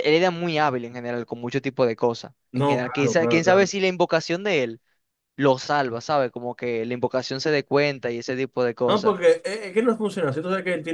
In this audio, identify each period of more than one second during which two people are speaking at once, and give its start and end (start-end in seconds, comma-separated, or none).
2.5-3.7